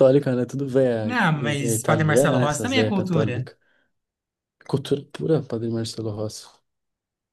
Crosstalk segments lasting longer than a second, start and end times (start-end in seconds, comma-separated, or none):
1.0-3.5